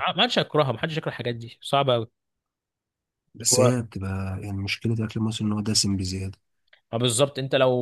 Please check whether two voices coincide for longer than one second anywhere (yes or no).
no